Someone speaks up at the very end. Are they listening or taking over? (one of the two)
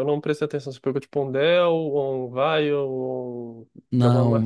taking over